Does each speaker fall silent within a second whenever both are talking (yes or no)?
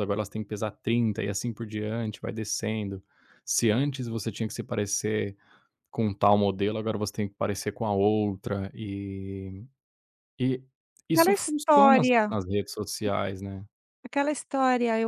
no